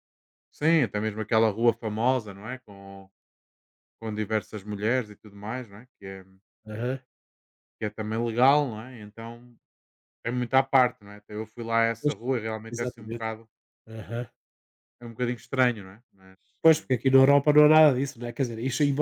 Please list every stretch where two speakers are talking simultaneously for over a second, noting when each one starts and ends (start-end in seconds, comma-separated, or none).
none